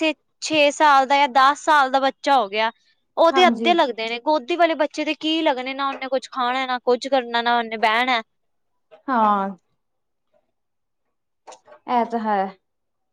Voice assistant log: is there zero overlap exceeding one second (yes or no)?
yes